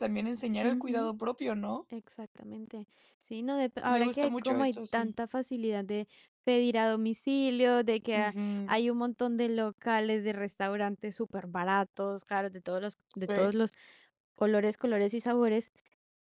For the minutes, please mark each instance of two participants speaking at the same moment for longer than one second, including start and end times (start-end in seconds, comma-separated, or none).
3.8-5.2